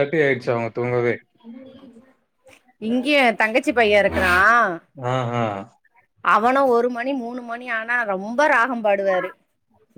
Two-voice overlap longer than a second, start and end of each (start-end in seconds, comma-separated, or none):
none